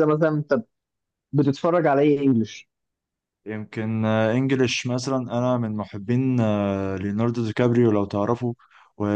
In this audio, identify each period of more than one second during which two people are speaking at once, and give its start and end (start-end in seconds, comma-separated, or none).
none